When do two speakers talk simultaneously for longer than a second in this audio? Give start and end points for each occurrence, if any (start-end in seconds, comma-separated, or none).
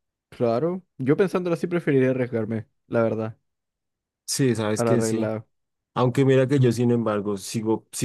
none